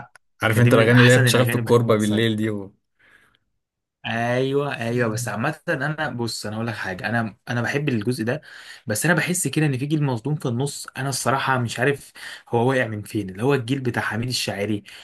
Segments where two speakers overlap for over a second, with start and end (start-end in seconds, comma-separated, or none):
0.5-2.4